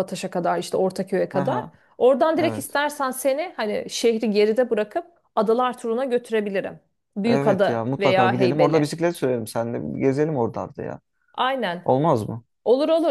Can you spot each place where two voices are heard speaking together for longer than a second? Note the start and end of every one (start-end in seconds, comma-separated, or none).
7.2-8.9